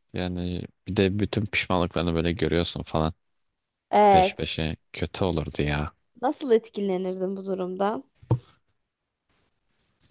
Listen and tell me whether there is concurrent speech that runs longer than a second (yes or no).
no